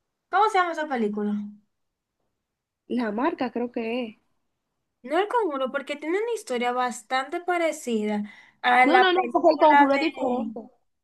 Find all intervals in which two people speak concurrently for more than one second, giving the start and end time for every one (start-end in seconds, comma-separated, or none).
8.8-10.5